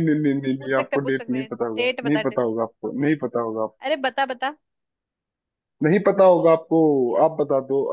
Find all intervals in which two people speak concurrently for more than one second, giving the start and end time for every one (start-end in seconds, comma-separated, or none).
0.6-2.4